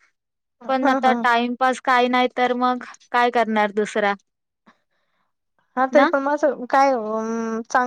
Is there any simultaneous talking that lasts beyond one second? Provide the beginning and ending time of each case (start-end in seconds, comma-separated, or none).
none